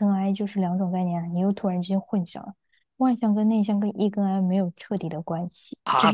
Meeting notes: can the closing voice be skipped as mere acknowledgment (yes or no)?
no